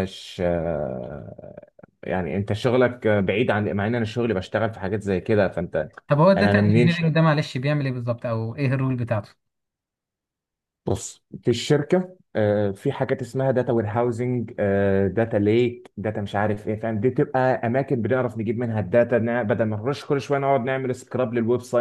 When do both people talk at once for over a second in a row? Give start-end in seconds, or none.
none